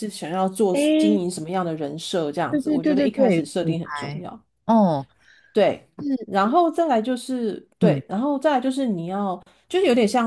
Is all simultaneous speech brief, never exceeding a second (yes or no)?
no